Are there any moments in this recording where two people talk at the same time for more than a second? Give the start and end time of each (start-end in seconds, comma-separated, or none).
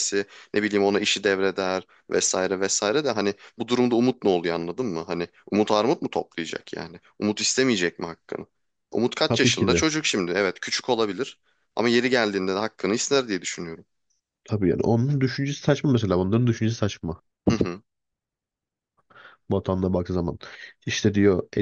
none